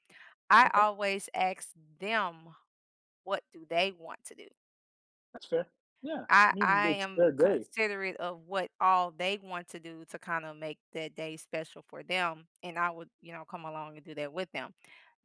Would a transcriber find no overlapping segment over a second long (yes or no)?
no